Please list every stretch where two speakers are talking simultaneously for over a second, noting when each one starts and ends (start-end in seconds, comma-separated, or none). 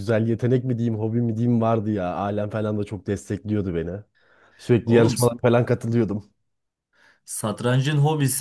none